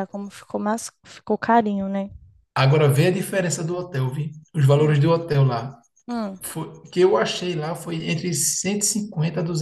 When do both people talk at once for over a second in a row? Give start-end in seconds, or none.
none